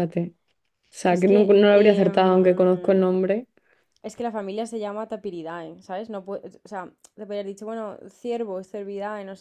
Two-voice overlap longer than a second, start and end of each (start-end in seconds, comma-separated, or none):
1.1-3.0